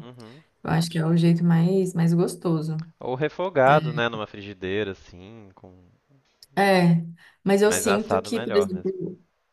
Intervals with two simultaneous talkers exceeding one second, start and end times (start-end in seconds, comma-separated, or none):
7.6-9.0